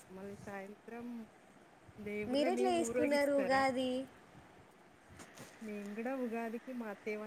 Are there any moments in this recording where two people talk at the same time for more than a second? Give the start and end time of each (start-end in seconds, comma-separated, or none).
2.3-3.6